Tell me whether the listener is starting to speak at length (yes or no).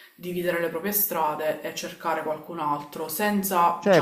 yes